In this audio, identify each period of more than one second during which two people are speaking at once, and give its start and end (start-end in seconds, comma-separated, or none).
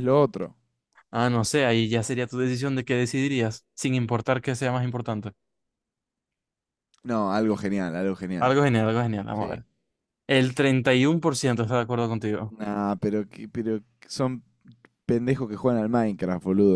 none